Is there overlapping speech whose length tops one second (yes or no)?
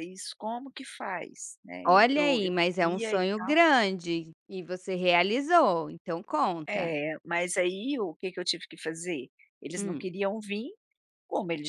yes